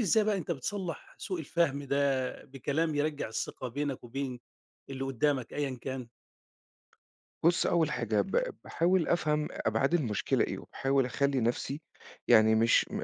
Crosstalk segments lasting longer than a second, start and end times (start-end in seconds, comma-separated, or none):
none